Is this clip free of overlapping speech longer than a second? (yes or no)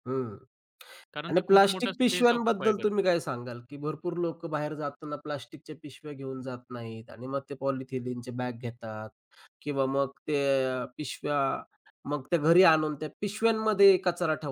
no